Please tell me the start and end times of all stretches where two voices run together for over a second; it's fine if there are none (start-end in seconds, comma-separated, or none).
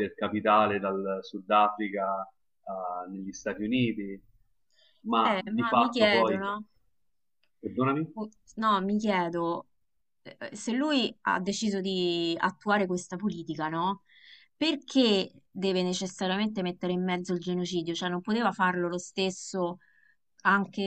5.2-6.4